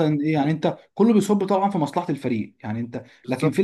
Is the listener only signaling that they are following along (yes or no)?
yes